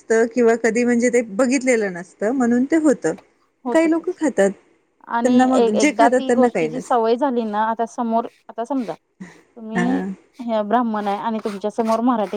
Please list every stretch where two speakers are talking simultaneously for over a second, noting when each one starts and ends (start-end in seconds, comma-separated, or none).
5.2-7.0